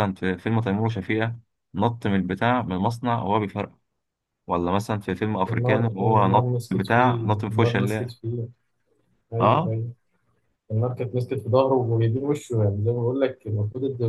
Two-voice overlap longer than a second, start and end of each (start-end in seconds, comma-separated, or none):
5.4-8.1